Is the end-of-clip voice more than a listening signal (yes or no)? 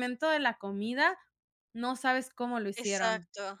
yes